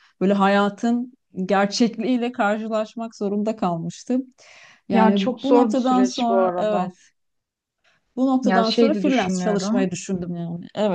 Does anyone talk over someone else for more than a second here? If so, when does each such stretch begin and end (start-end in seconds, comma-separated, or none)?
4.9-6.9, 8.4-9.9